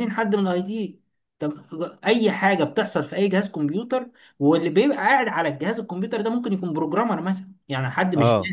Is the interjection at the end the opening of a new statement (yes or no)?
no